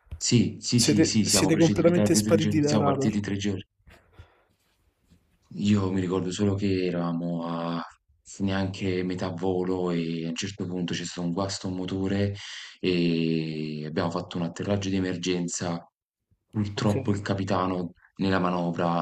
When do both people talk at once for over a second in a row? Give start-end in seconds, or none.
0.7-3.2